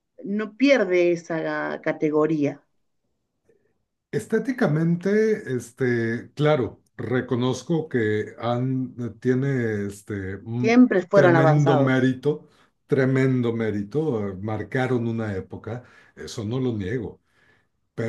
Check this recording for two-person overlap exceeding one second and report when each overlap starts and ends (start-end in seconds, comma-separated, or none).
10.6-12.0